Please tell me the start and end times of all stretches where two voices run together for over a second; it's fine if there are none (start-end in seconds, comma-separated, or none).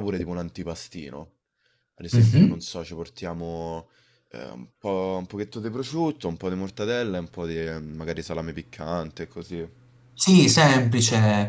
none